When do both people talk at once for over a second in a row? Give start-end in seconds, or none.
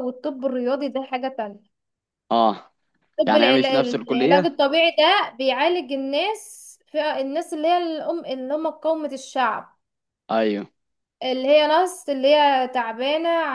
3.3-4.6